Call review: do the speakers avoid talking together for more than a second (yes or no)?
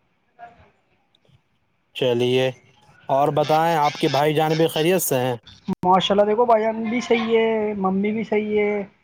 yes